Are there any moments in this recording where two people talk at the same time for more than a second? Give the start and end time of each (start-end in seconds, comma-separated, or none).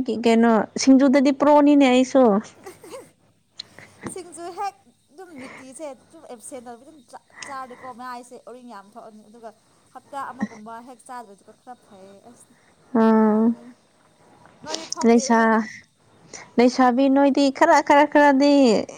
none